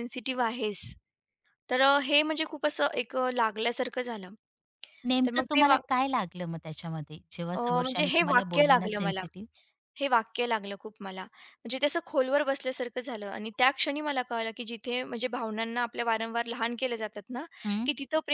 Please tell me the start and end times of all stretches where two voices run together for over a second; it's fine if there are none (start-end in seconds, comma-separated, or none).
7.5-9.2